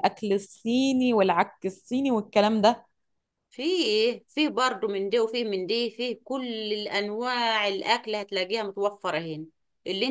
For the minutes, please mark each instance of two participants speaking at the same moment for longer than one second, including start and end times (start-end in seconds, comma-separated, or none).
none